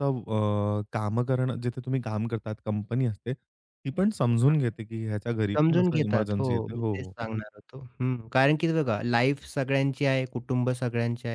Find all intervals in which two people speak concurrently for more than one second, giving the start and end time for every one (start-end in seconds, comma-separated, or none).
5.6-7.1